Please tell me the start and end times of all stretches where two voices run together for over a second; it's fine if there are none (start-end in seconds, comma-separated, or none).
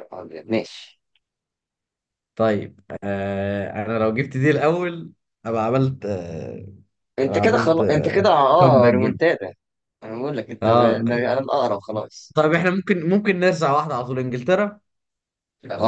7.2-9.2